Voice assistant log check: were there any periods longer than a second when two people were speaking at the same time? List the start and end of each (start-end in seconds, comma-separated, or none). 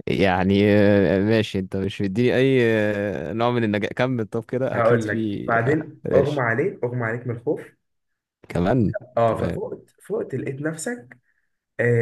4.7-6.5